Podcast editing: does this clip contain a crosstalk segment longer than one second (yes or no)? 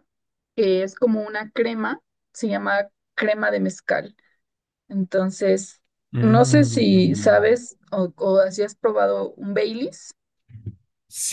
yes